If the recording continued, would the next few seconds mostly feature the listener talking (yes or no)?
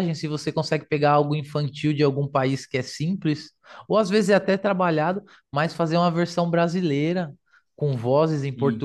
no